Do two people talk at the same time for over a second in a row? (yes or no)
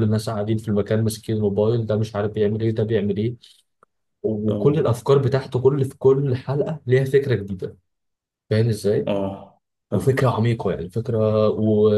no